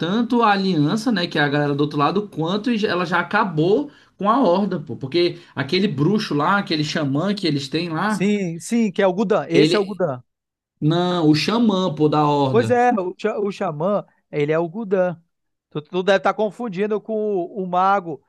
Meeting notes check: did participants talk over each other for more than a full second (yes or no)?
no